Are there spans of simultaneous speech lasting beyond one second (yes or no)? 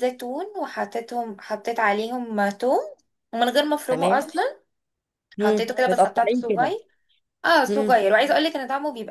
yes